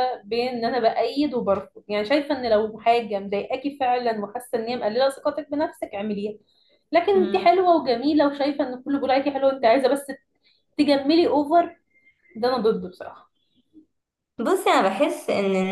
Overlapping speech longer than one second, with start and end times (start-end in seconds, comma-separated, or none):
none